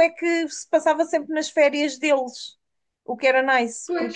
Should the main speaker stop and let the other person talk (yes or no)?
no